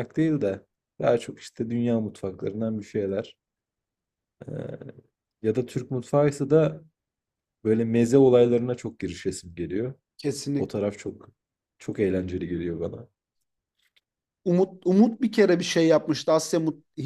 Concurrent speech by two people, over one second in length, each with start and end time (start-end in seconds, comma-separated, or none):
none